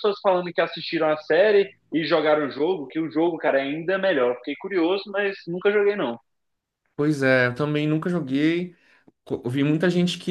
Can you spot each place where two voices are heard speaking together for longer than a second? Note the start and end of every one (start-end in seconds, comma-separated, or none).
none